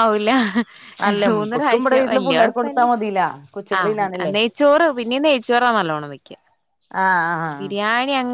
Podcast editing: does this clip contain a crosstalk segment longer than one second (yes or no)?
yes